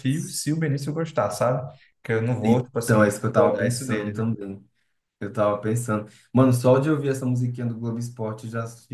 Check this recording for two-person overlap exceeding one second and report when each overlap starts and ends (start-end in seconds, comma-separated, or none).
2.4-4.2